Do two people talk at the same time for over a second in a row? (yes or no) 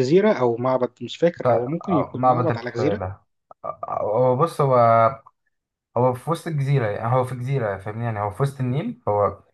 yes